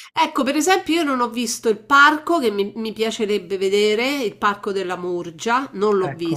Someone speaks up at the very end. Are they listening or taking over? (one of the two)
listening